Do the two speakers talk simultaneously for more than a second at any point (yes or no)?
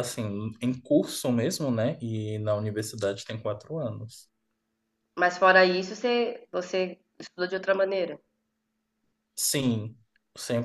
no